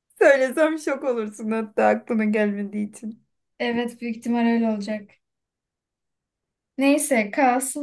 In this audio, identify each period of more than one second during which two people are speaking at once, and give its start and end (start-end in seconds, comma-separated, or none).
none